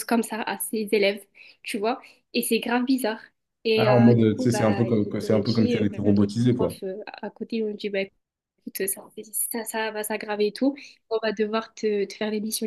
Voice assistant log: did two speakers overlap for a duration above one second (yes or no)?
yes